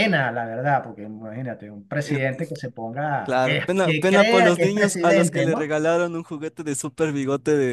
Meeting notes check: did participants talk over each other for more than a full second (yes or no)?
yes